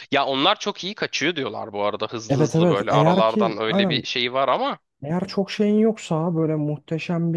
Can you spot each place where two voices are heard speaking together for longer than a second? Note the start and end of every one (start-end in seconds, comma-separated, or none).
2.3-4.0